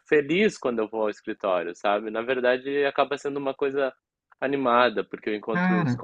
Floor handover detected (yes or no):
no